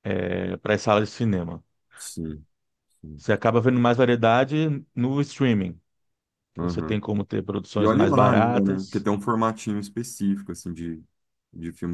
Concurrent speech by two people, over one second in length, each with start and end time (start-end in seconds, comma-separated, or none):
7.8-9.1